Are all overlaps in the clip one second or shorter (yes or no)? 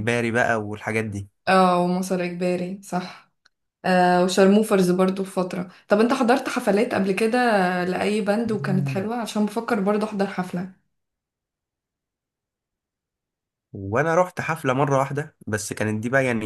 yes